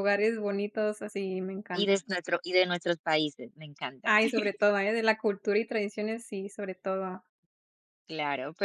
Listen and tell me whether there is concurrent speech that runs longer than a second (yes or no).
no